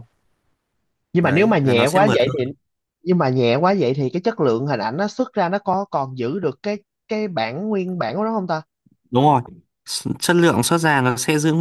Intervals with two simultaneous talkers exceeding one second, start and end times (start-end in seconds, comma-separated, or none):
1.2-2.5